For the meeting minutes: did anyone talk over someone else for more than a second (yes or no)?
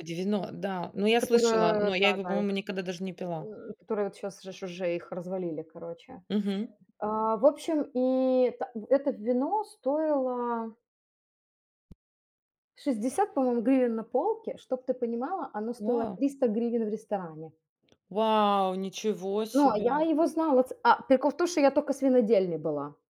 yes